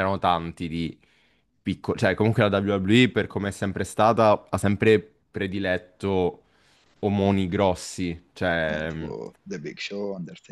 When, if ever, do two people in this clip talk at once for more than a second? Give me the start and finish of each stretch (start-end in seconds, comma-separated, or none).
none